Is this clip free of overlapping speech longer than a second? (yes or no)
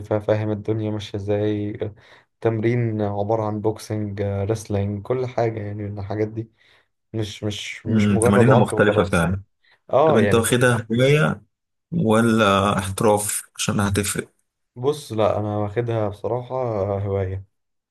no